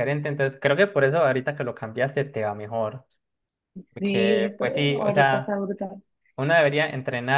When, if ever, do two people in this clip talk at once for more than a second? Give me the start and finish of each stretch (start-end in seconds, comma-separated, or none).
4.0-5.6